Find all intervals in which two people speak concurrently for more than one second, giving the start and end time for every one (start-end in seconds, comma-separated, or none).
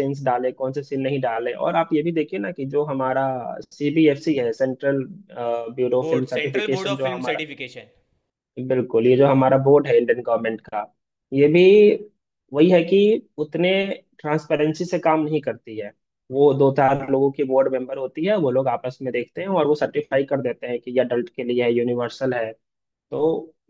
6.0-7.5